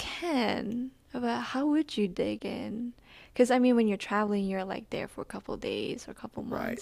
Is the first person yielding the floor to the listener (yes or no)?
yes